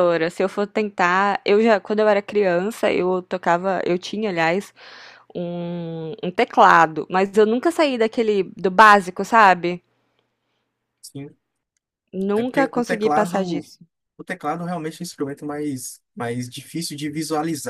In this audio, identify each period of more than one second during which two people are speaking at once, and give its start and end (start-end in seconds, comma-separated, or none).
12.3-13.7